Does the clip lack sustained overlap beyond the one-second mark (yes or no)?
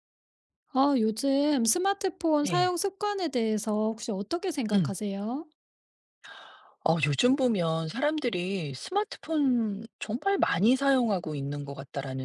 yes